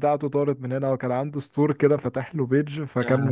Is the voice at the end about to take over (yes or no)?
no